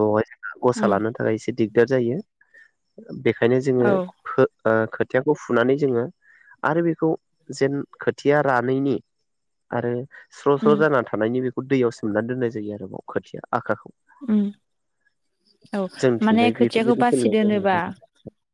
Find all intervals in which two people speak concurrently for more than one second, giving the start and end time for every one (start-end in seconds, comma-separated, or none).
16.2-17.8